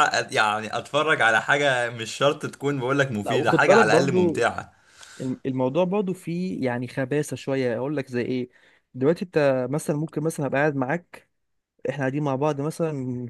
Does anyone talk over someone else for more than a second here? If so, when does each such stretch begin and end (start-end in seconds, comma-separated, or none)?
3.2-4.5